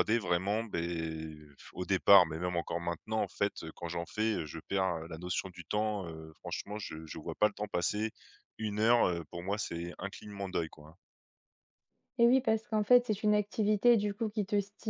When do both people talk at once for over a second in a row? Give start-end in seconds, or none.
none